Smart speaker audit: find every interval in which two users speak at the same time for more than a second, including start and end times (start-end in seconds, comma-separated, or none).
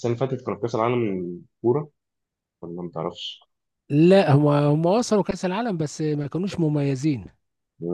none